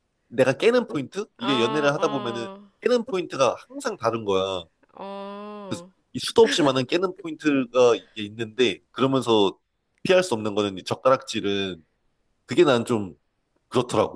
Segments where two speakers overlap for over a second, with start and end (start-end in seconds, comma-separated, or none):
1.4-2.6